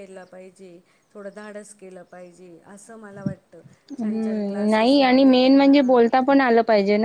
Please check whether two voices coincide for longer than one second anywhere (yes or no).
yes